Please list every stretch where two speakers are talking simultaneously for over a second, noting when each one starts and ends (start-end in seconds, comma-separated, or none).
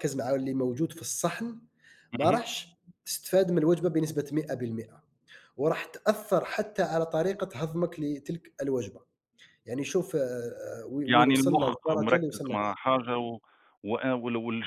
11.1-12.7